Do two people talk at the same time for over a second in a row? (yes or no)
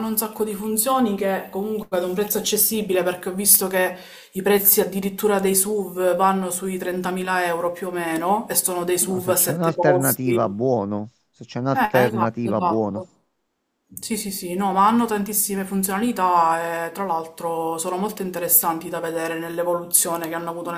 yes